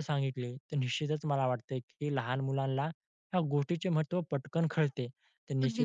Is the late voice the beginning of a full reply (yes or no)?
no